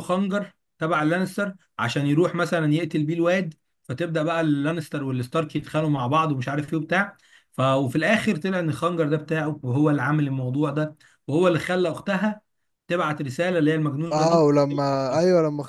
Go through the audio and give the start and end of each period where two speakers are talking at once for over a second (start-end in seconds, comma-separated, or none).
none